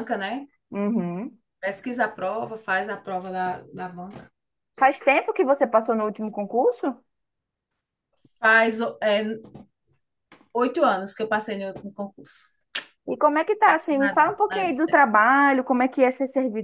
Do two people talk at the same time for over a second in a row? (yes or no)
yes